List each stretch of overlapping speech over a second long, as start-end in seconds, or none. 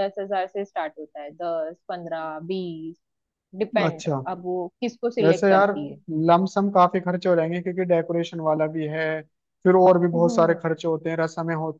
none